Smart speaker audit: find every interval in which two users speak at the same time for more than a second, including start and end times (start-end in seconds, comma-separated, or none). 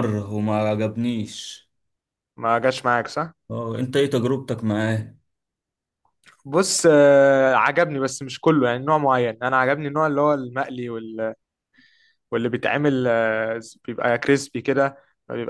none